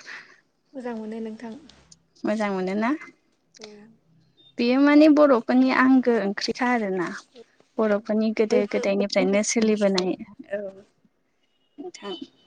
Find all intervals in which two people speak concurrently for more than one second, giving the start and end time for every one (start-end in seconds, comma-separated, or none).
8.5-10.1